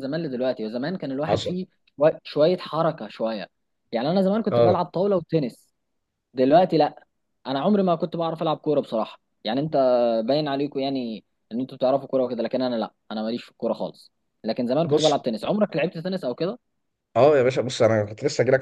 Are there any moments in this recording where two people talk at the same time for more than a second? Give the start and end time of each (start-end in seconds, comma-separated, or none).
none